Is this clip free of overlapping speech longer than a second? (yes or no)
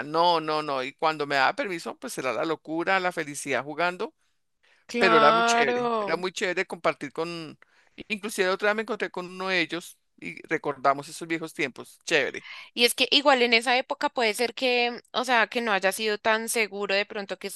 no